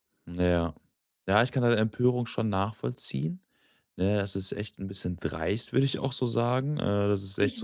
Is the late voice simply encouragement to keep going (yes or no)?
yes